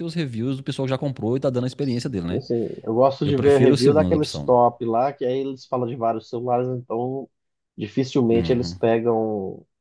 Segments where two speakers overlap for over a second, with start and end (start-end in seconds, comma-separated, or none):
3.2-4.5